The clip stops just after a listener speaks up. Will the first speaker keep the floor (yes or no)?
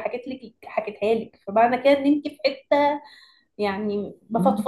yes